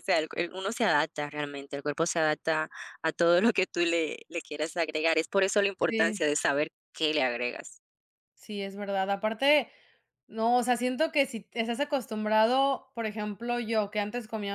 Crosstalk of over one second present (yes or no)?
no